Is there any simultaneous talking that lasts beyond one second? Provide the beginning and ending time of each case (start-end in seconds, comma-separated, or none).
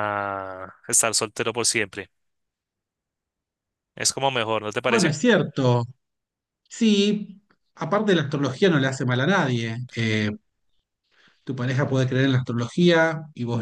none